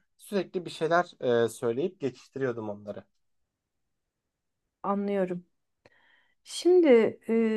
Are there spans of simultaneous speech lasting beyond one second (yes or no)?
no